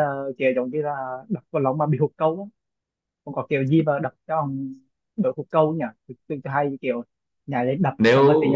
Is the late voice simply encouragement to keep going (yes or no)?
yes